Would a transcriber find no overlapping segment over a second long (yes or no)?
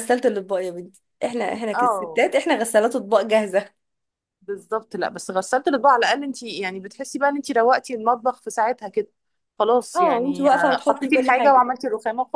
no